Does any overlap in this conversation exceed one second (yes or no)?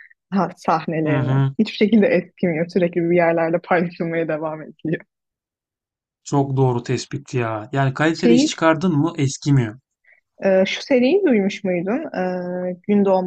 no